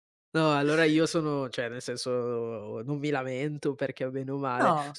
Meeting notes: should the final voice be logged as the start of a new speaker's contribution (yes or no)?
no